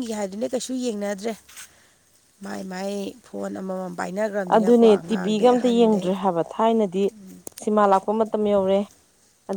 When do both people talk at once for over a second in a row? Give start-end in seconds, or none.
4.5-6.1